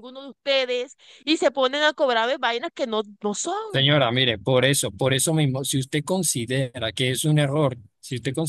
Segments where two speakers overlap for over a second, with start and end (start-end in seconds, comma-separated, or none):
none